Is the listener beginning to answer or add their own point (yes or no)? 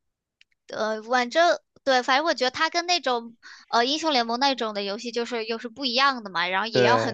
no